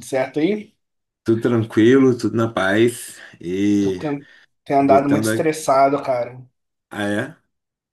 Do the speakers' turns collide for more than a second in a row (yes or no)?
no